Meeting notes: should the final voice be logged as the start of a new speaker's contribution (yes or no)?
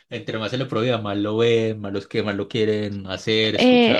yes